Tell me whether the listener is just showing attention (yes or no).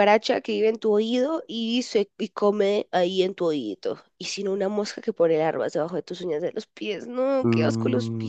no